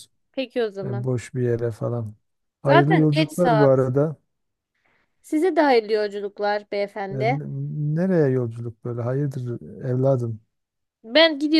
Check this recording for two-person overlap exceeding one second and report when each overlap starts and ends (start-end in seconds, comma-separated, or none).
2.6-3.9